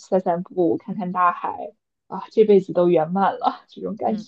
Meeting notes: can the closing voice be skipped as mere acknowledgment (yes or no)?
no